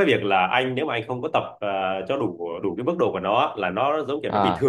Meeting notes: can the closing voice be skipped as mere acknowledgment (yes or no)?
yes